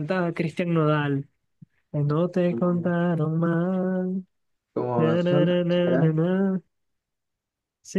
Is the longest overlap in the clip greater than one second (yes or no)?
yes